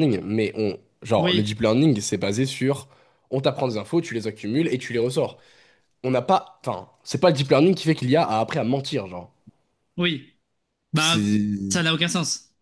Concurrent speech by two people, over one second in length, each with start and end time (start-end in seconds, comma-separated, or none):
none